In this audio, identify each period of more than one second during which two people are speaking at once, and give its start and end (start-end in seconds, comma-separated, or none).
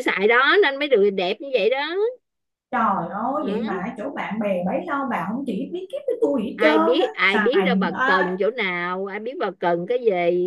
6.5-8.4